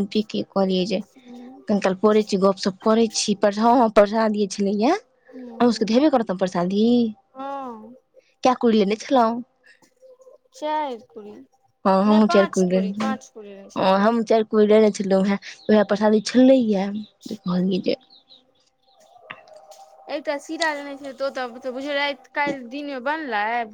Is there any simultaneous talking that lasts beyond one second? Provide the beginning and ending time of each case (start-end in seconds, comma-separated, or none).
none